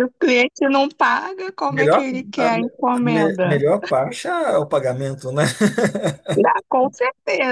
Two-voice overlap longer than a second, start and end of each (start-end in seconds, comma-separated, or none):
1.7-3.6